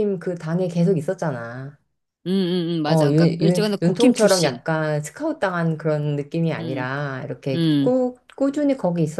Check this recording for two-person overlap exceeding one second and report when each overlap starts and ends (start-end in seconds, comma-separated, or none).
2.9-4.6